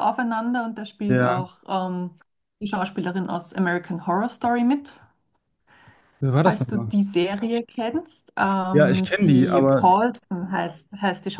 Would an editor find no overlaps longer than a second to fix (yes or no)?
no